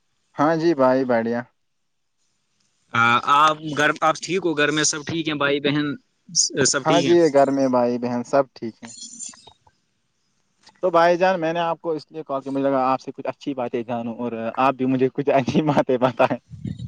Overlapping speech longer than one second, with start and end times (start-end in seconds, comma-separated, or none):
none